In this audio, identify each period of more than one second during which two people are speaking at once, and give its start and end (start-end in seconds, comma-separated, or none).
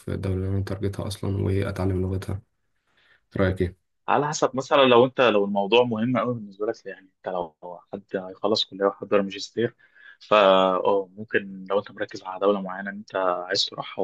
none